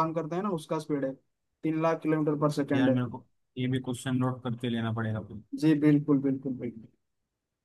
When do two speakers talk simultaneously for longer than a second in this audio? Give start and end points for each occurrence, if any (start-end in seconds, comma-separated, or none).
none